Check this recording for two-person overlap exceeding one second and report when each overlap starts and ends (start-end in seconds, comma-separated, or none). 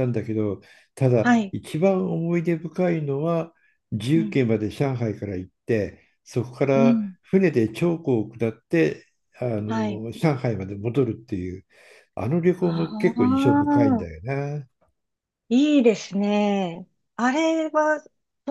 12.6-14.1